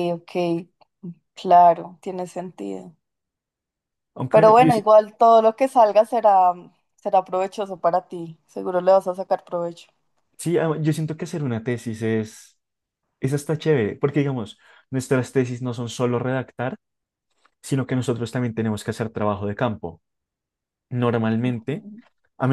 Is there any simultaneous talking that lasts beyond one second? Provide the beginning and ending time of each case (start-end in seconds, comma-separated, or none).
none